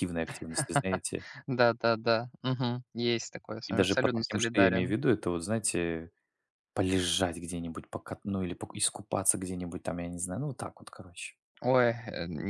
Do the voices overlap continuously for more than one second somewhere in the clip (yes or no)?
yes